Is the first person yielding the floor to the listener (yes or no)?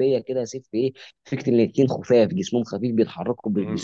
yes